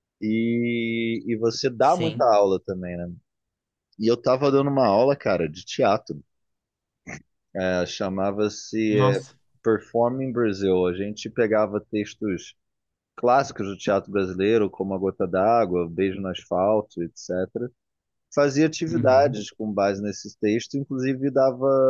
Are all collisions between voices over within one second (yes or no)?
yes